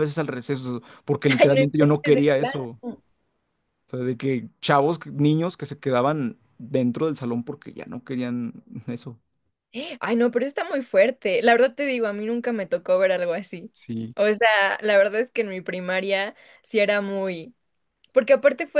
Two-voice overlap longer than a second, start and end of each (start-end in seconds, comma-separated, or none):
1.4-2.8